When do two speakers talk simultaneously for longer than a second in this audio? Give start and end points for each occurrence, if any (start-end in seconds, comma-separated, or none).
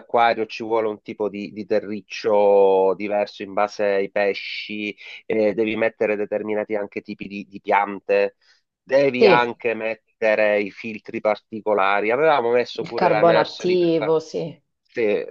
12.8-14.2